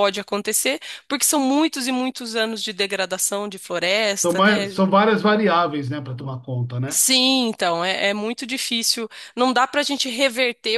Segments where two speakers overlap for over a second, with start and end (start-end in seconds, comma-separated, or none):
none